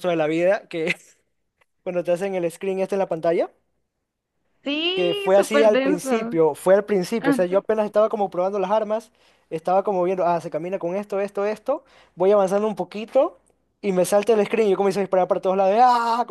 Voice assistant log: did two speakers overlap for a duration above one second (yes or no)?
yes